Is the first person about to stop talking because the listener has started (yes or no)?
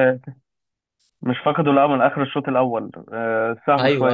no